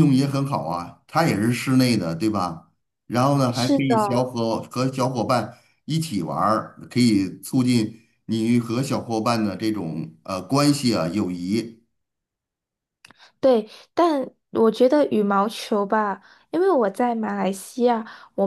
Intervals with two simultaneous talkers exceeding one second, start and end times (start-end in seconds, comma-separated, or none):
none